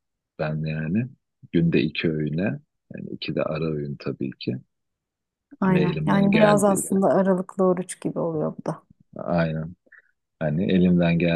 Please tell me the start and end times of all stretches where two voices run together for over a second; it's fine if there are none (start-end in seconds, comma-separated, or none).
5.7-7.0